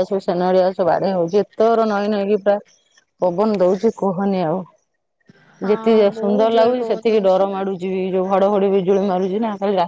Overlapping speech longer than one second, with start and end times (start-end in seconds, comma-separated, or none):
5.7-7.4